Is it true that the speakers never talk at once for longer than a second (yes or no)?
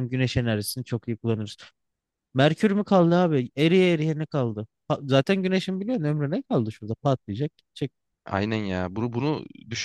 yes